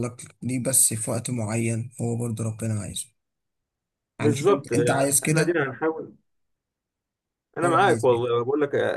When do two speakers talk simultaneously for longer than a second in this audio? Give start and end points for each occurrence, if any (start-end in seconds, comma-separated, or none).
4.2-5.5